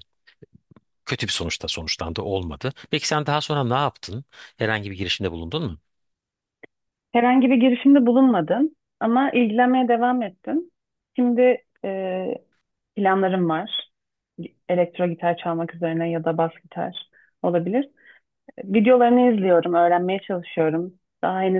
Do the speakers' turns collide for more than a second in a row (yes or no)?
no